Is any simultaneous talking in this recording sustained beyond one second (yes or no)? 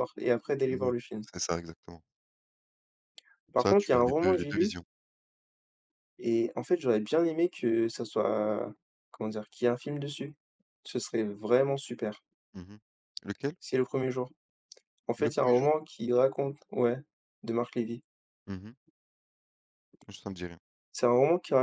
yes